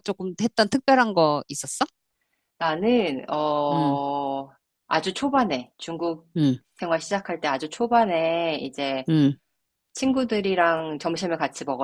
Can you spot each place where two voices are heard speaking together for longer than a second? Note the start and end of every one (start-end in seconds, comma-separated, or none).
none